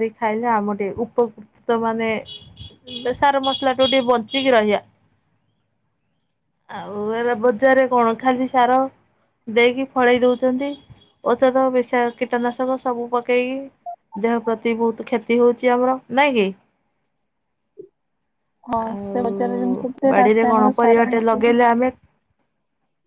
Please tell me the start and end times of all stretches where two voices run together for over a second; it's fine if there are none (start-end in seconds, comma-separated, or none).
18.8-21.5